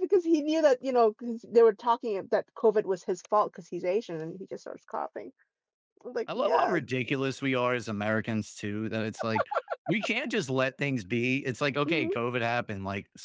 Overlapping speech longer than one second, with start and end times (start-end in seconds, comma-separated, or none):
none